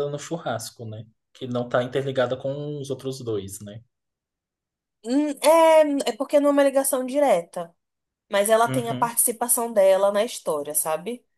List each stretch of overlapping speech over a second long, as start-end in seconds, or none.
none